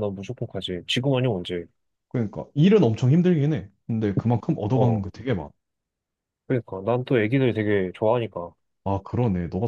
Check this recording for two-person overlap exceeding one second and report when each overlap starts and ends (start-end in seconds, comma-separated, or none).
none